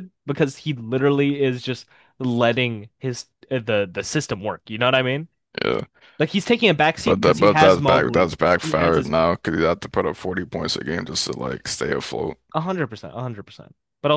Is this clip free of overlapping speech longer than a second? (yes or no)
no